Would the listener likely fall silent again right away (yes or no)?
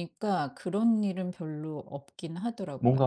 no